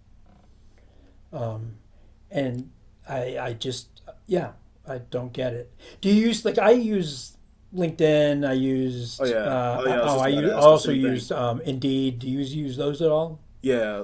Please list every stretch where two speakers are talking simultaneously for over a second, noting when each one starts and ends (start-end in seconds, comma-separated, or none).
9.2-11.3